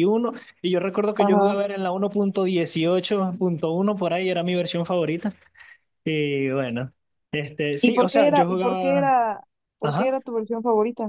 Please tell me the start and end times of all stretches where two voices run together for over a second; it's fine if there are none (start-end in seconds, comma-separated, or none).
7.8-9.2